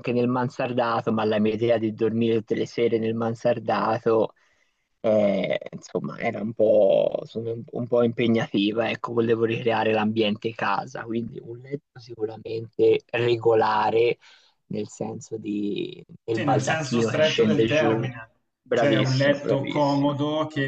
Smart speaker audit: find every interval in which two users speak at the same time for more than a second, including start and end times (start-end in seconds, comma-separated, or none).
16.3-18.1, 18.7-20.1